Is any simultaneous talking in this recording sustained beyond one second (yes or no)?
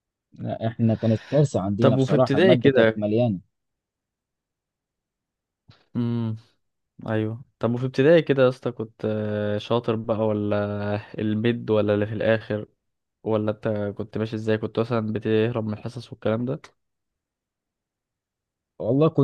yes